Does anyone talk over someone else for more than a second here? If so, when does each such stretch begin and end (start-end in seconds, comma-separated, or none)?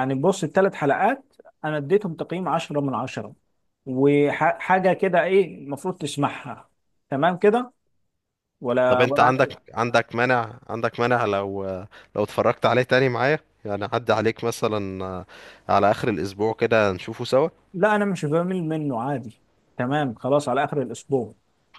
none